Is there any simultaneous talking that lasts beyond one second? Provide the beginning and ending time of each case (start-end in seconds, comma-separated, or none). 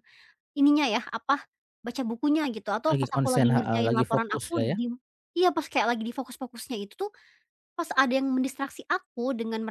2.9-4.8